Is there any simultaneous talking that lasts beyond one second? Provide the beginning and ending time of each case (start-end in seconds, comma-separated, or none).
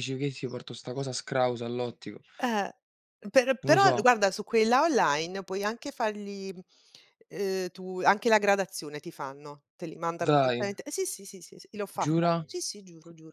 none